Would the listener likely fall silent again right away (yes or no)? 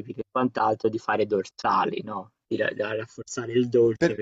yes